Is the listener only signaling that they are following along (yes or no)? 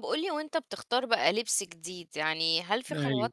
yes